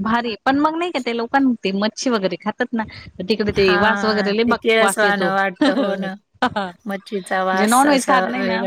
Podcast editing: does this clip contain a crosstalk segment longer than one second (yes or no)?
yes